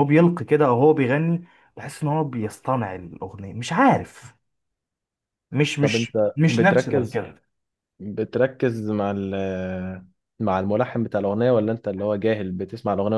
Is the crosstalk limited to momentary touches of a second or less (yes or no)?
no